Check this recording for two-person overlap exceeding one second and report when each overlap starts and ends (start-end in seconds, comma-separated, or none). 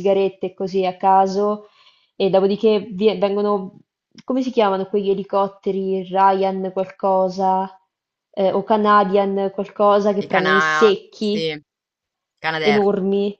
10.2-11.5